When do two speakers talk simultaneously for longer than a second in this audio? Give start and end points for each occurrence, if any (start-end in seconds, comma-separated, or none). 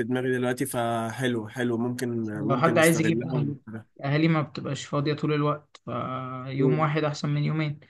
2.2-3.6